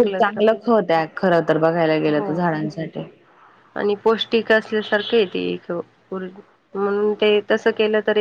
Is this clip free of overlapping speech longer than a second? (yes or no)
yes